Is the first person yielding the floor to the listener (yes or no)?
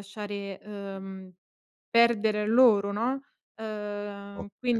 yes